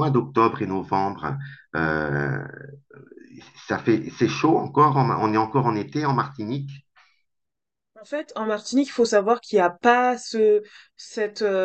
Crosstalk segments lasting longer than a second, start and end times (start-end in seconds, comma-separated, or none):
none